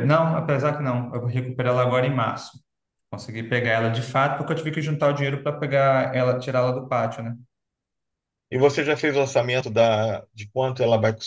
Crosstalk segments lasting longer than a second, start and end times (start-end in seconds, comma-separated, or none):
none